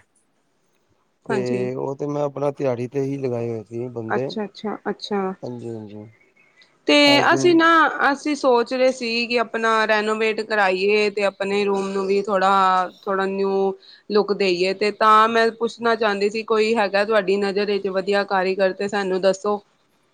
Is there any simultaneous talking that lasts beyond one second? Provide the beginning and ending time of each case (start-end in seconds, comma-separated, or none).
none